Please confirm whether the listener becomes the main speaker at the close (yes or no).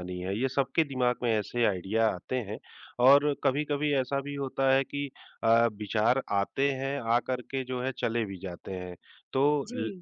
no